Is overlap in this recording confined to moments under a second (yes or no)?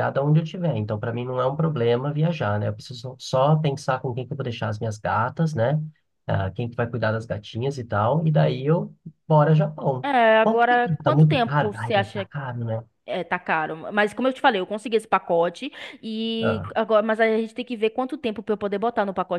no